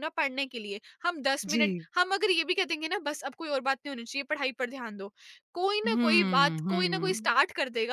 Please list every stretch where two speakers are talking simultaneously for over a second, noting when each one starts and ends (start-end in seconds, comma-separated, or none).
5.8-7.4